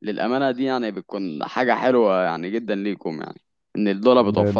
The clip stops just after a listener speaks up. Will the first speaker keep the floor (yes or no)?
no